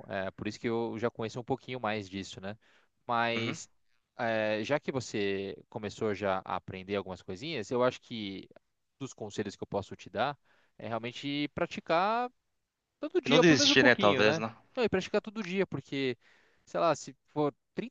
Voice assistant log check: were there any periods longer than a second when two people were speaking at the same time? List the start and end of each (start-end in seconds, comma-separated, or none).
13.2-14.5